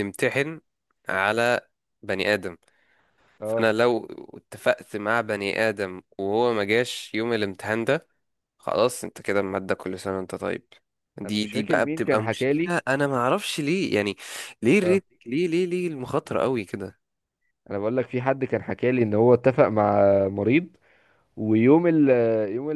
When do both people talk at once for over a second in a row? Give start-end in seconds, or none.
11.2-12.7